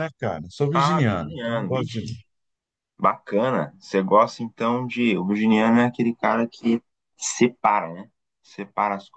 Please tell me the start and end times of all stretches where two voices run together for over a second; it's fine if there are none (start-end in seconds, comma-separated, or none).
0.7-2.2